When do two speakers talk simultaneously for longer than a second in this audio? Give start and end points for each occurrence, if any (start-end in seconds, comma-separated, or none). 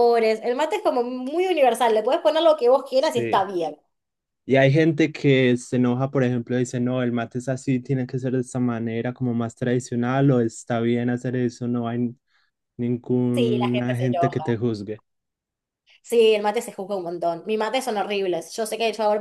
13.3-14.6